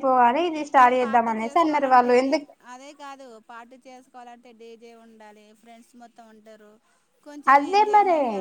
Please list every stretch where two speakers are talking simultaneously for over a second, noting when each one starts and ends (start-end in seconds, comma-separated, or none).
0.7-2.3